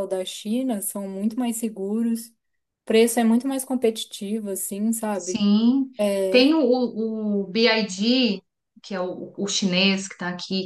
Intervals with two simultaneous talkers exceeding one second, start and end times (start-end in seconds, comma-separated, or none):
none